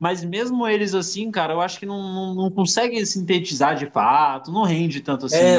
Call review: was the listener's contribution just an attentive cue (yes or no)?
no